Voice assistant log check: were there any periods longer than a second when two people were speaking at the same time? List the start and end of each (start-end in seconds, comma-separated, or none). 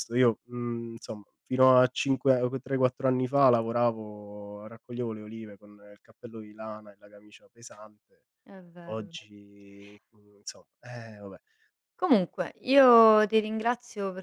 none